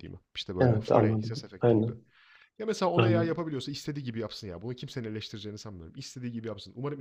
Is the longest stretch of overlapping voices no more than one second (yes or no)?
no